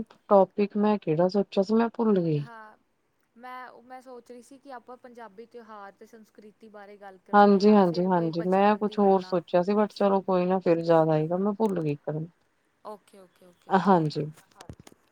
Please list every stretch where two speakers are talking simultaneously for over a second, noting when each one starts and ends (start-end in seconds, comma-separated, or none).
7.3-10.0